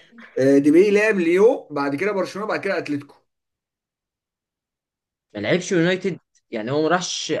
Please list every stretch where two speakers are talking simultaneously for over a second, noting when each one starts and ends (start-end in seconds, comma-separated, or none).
none